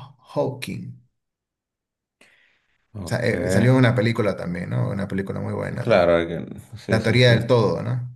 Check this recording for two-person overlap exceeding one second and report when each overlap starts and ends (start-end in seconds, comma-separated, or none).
none